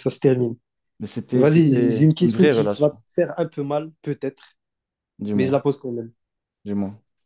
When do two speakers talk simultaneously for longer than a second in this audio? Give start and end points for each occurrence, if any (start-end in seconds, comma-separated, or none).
1.3-3.0